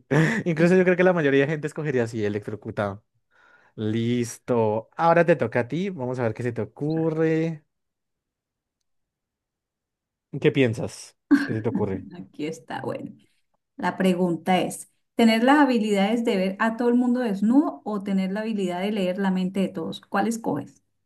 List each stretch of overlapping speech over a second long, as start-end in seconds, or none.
none